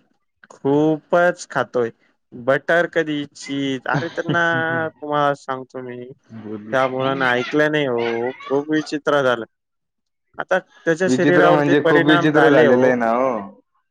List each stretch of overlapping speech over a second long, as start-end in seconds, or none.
11.1-12.9